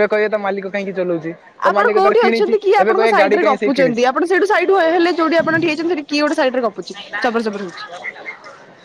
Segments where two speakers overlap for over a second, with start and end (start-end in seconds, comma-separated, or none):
1.7-4.0